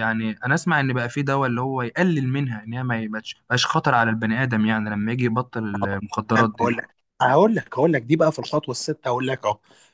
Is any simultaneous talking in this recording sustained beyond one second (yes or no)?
no